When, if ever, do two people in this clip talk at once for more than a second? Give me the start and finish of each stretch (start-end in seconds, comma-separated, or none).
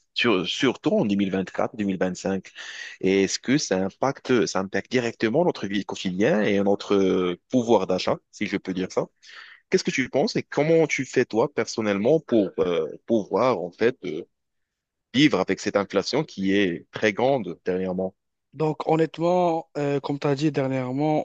none